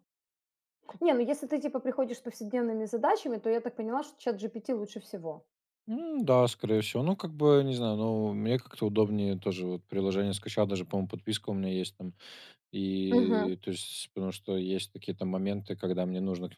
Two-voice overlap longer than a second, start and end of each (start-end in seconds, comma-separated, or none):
none